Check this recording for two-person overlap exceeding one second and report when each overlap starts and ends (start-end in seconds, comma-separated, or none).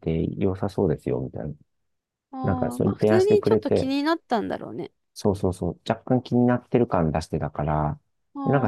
2.4-3.9